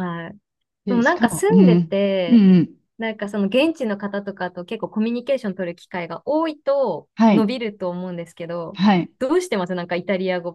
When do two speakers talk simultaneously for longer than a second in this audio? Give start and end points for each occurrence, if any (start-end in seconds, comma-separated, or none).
0.9-2.4